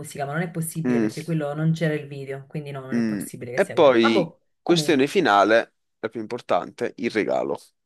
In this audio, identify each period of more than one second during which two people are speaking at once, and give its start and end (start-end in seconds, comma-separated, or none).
3.0-5.1